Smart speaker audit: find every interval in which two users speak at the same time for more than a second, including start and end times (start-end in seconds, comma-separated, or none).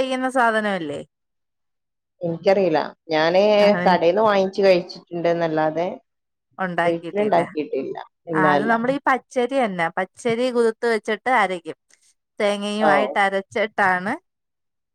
none